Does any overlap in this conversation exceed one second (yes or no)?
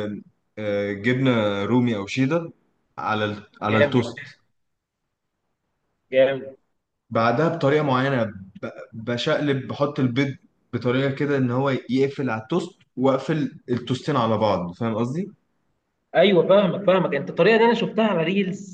no